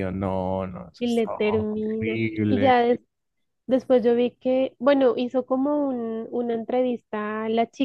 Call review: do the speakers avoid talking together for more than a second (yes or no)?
no